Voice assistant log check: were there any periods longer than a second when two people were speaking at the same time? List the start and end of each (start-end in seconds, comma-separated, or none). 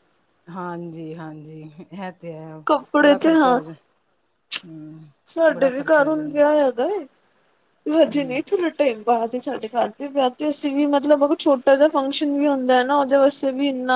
none